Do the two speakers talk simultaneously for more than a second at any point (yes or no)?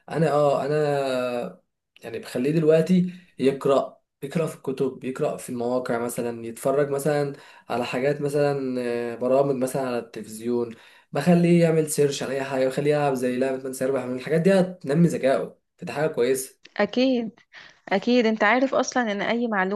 no